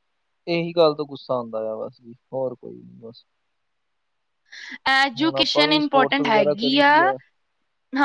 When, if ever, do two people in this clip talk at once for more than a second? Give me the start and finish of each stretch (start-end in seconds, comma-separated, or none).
5.2-7.0